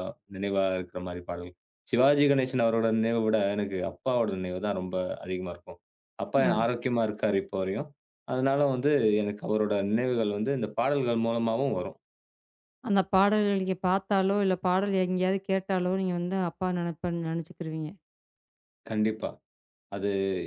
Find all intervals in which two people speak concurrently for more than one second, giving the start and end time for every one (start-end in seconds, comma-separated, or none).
none